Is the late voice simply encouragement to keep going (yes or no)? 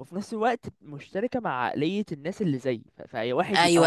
no